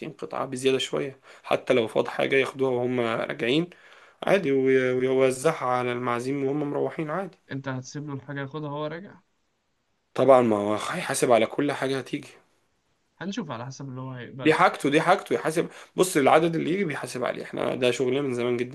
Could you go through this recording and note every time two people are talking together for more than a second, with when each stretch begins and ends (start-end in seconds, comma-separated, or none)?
none